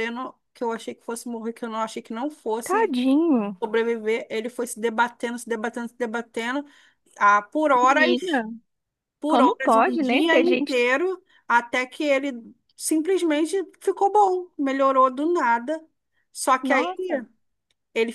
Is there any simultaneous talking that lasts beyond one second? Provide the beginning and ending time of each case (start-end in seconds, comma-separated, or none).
9.3-10.8